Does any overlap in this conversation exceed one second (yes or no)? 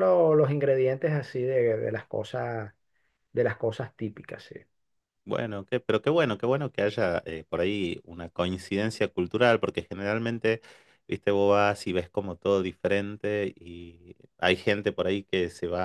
no